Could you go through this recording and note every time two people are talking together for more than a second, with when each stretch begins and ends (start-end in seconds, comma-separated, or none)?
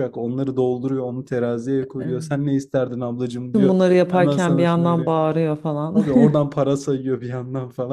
3.5-5.1